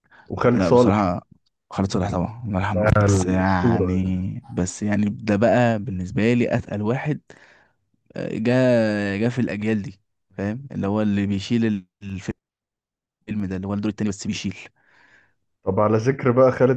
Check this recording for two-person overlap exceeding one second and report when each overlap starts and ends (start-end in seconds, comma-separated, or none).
2.7-4.0